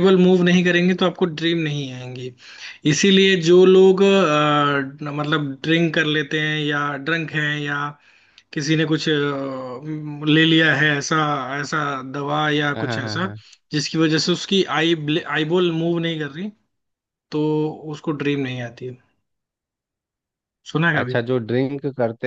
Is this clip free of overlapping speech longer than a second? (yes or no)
yes